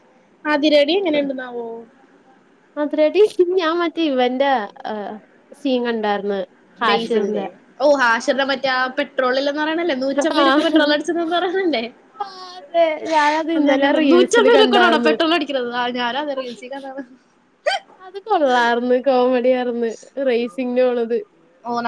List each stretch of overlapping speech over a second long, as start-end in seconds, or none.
13.6-15.1